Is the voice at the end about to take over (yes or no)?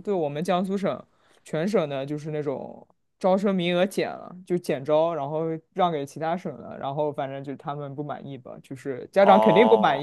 yes